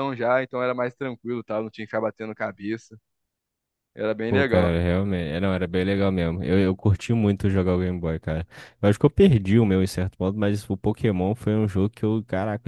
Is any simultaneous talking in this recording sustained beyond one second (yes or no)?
no